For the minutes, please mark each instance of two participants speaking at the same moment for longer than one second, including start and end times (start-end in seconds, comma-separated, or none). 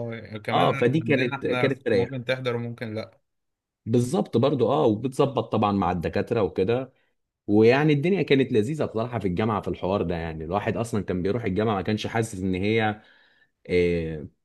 0.5-2.2